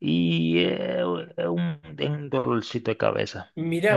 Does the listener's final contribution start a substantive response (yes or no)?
yes